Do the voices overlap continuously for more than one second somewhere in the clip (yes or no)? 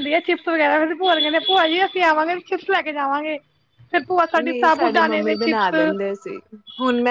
yes